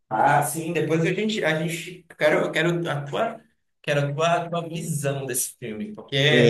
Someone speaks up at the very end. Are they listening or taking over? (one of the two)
taking over